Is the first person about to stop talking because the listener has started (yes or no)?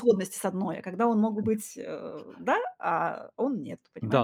yes